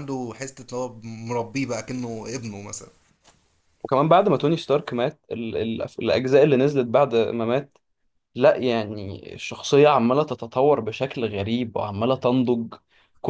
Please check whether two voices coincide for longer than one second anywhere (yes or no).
no